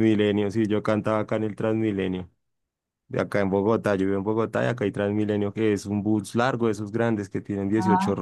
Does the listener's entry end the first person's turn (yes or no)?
no